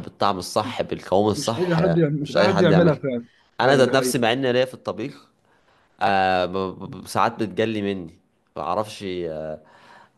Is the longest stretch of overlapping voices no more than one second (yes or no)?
no